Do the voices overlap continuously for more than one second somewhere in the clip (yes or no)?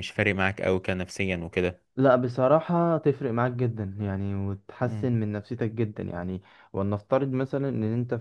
no